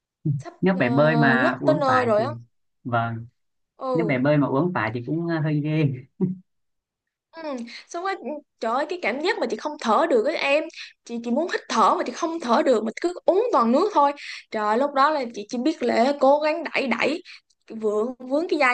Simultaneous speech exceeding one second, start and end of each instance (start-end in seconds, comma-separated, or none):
0.6-2.2